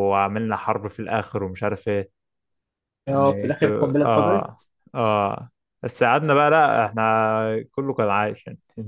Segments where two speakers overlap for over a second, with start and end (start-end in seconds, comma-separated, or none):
3.1-4.7